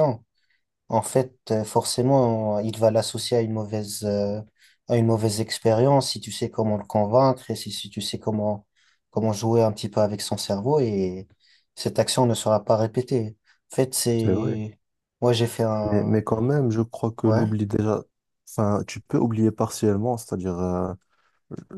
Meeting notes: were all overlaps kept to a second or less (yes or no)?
yes